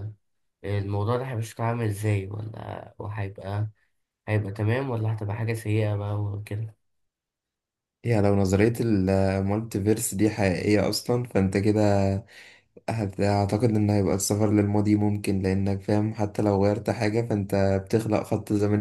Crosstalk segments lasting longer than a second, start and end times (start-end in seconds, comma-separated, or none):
none